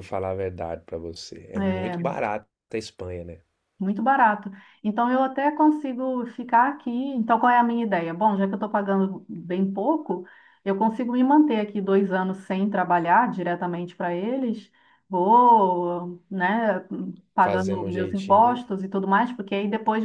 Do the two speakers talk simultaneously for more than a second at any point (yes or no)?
yes